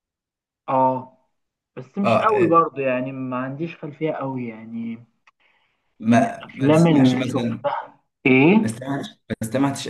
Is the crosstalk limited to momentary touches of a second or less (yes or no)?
no